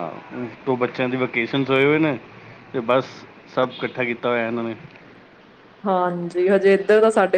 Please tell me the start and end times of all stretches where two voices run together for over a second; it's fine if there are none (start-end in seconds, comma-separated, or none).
none